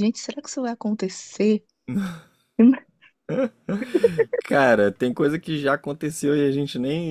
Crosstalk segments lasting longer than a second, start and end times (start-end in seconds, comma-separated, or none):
none